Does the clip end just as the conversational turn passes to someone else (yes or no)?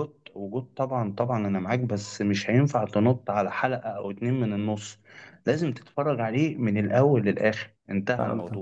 yes